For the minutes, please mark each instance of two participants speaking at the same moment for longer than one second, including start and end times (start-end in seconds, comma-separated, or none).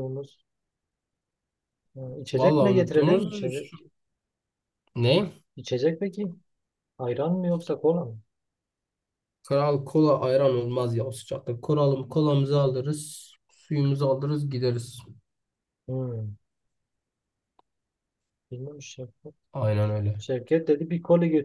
2.3-3.8